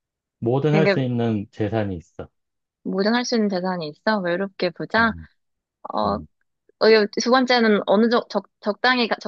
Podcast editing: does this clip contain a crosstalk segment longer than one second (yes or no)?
no